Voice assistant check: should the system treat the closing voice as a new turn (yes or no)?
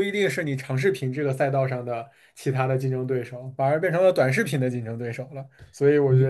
no